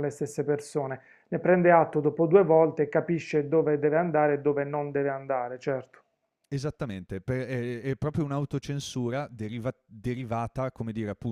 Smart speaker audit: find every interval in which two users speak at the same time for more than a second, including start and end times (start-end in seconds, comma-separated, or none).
none